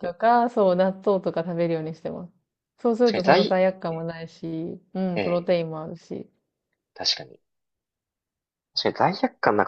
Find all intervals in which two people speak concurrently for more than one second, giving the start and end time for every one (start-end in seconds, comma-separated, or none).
none